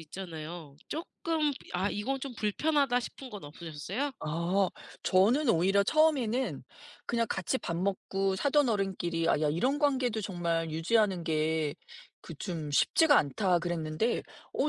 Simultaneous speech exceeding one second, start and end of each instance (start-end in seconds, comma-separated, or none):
none